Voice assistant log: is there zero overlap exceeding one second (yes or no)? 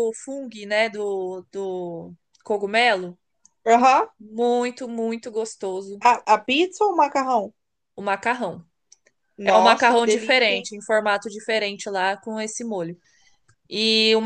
no